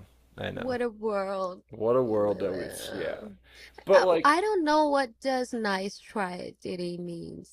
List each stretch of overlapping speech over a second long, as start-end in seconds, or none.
2.0-3.2